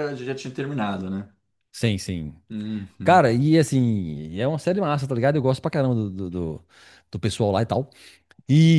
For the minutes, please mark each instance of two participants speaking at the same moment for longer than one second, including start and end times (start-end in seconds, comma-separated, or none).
none